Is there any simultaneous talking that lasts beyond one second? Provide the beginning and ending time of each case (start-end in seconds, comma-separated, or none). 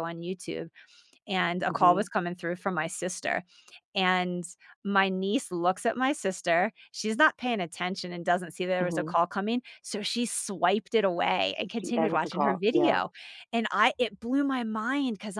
11.8-13.0